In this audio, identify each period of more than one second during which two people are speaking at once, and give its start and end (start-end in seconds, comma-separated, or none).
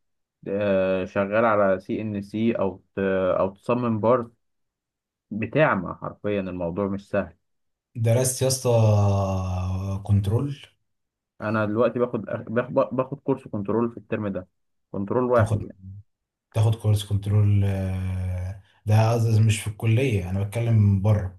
none